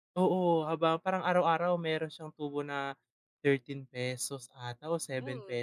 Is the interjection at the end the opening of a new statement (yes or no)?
yes